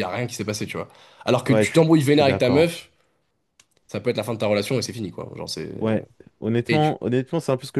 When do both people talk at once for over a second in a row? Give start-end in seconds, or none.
1.5-2.7